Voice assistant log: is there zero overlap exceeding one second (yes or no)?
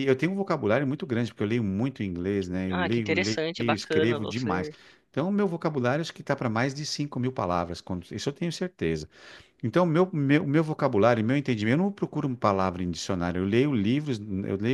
no